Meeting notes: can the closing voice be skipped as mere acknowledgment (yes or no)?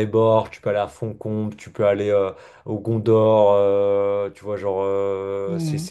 yes